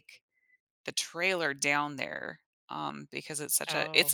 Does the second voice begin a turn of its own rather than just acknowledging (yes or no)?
yes